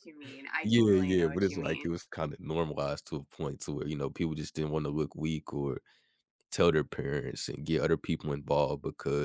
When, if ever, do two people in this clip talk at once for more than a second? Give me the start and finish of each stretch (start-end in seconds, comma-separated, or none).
0.7-1.9